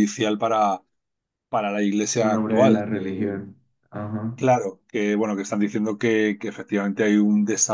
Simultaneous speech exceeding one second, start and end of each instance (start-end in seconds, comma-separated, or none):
2.2-3.5